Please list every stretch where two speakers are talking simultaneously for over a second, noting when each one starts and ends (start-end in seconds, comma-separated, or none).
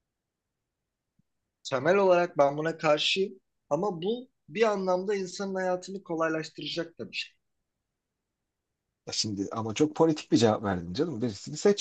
none